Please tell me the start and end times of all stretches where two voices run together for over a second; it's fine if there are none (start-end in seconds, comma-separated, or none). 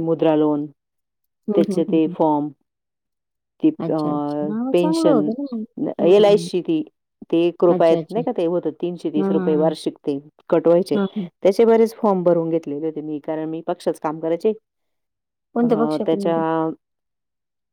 none